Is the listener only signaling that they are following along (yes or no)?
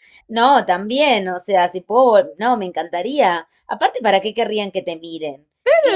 no